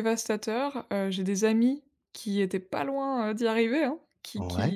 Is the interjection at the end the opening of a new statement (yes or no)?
no